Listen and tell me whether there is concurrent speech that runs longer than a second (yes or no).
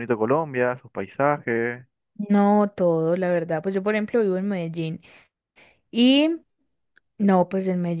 no